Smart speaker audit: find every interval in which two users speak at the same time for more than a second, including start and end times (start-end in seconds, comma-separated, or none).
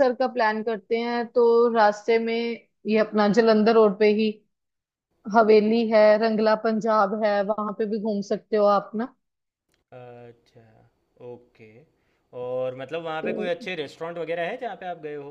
none